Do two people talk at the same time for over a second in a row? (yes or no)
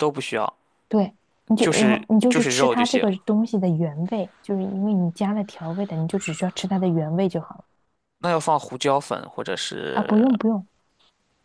yes